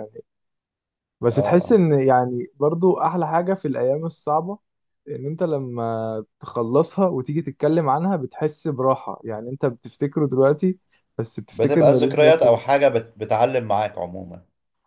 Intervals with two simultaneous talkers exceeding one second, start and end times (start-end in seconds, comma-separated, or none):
11.5-12.7